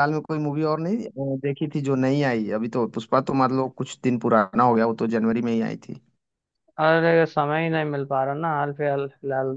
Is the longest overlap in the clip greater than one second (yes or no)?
no